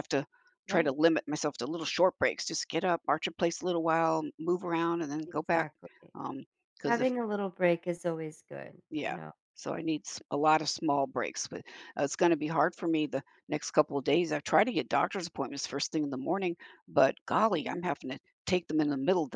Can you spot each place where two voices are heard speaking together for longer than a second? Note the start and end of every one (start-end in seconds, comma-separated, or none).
none